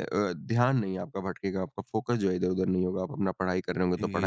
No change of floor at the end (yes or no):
yes